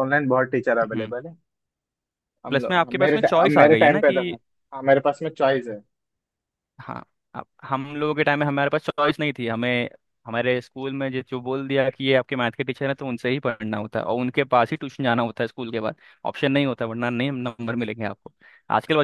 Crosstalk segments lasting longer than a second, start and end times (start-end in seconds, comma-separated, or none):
2.5-4.2